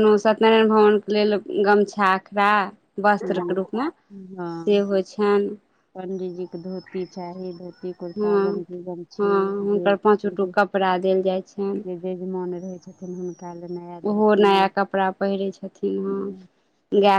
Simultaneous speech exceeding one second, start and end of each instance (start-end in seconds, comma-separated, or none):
none